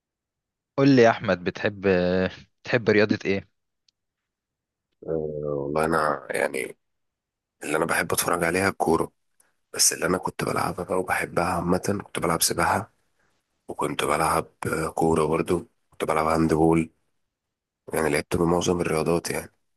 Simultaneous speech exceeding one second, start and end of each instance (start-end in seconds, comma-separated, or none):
none